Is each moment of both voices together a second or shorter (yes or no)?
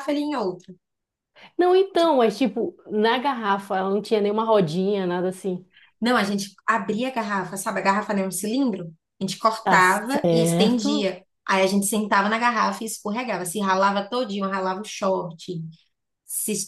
no